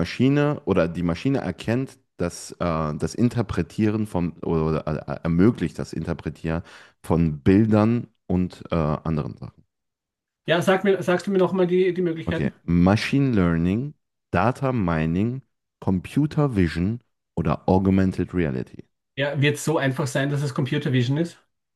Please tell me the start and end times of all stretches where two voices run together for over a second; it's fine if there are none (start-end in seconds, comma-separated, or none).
none